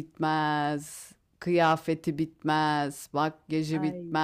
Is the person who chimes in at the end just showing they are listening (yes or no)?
yes